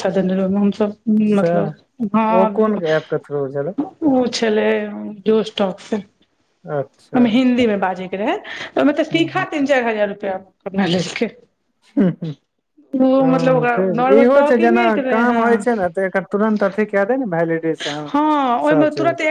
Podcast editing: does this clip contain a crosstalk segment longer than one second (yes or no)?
yes